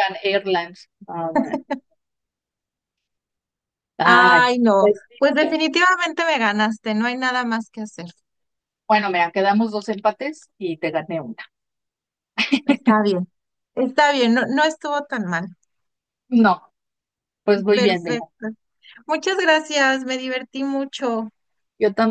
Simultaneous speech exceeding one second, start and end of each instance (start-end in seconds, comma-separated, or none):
4.0-5.6